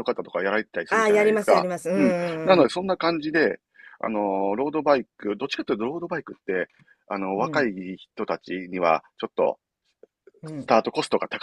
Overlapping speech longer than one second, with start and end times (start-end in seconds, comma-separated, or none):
0.9-2.7